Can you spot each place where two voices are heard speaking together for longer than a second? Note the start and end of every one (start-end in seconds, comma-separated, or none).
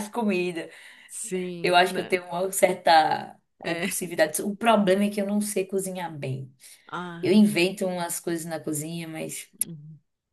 none